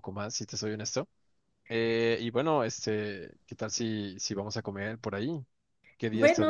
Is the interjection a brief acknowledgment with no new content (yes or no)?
no